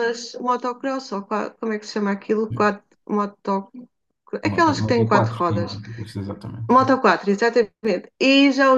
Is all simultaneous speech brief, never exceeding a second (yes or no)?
no